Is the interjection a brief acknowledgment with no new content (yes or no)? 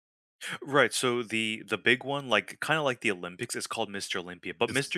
yes